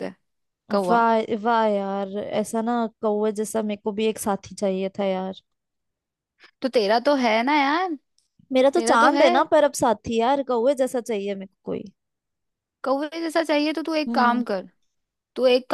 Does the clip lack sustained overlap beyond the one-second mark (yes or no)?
yes